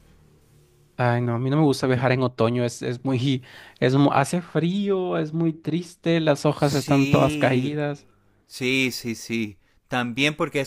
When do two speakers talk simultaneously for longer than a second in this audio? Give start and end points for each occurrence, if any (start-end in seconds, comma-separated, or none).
6.5-7.8